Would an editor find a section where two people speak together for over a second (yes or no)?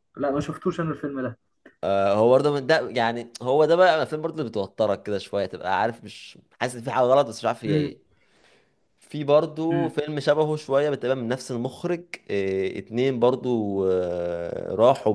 no